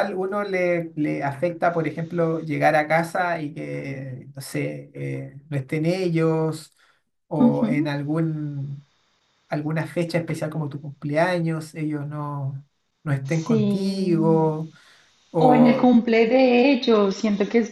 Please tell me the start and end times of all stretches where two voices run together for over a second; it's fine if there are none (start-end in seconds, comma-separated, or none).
13.4-14.6